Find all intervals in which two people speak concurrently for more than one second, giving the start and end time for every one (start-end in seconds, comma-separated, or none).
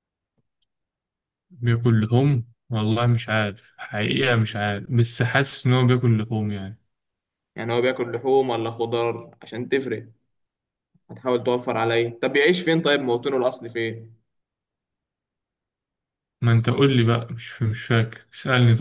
none